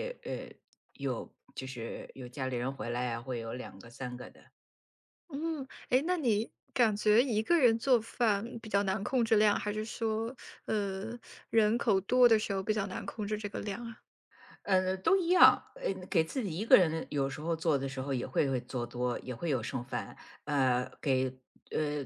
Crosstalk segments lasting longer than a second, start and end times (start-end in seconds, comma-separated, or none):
none